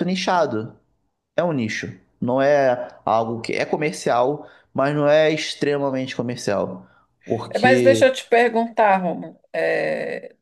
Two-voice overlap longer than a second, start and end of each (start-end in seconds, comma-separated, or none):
none